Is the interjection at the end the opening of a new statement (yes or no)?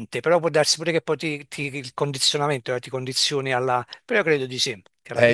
yes